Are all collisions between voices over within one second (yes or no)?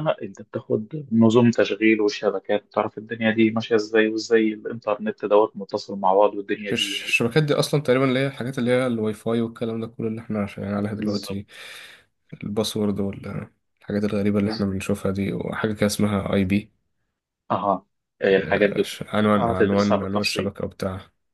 no